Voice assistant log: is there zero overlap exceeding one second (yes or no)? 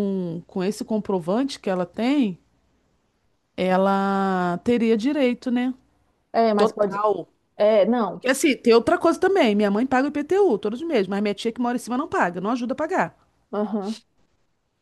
yes